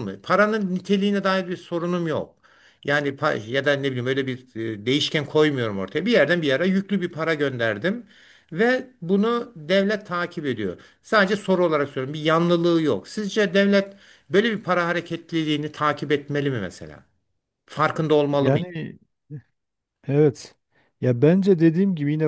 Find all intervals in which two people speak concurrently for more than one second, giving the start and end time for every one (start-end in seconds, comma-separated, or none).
none